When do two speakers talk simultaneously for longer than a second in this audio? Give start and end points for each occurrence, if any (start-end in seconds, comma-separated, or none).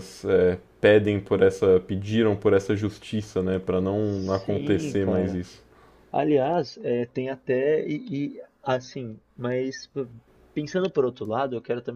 4.0-5.4